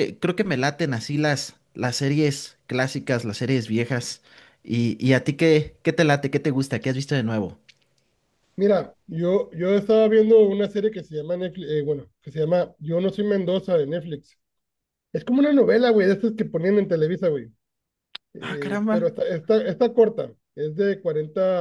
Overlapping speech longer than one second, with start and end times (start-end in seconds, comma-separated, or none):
none